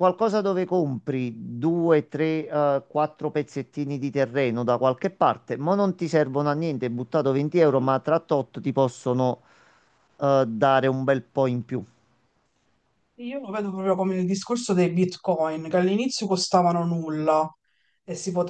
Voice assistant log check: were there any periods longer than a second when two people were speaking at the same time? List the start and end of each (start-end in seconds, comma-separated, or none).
none